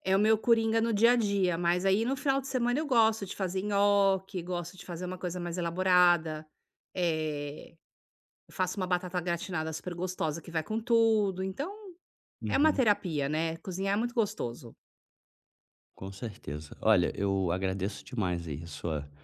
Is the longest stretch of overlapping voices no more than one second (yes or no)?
yes